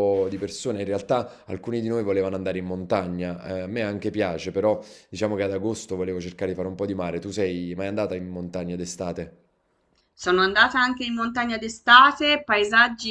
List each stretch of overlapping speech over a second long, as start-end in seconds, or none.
none